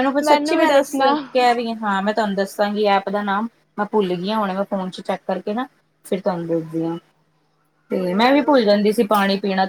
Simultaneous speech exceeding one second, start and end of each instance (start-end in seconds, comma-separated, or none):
8.0-9.2